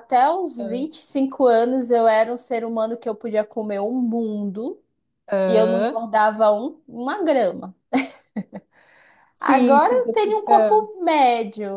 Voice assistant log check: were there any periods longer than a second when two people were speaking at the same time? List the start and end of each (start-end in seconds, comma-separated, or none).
9.4-10.8